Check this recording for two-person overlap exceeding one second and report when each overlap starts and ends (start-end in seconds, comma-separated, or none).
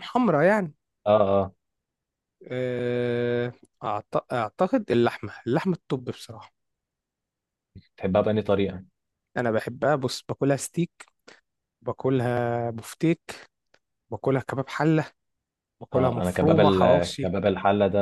15.9-17.3